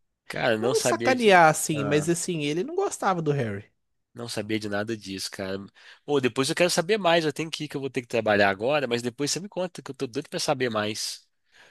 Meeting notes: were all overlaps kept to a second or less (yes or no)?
no